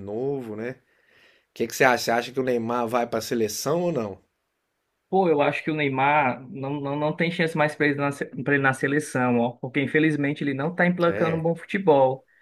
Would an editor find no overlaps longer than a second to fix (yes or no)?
yes